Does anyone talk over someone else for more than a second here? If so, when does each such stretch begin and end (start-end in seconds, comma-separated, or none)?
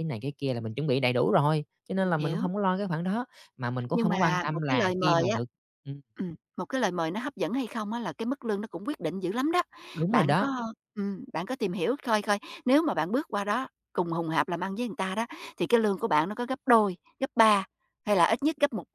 3.9-5.4